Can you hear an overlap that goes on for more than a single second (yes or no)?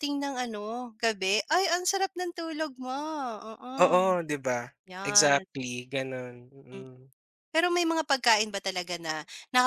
no